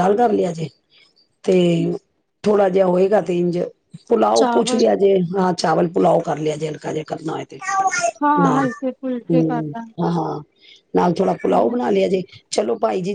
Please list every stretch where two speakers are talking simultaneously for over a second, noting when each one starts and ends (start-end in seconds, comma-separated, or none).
none